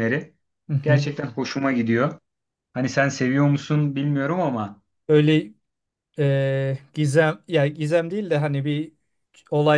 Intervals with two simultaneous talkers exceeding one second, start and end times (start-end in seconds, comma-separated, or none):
none